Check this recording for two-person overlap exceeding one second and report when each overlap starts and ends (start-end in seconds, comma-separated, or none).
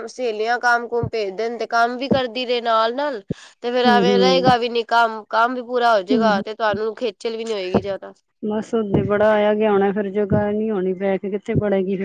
none